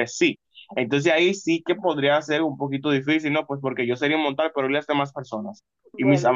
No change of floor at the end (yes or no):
yes